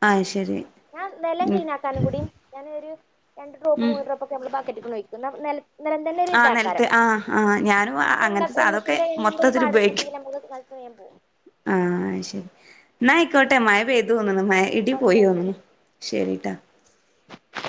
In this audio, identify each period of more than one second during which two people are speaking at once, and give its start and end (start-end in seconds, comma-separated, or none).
8.3-10.1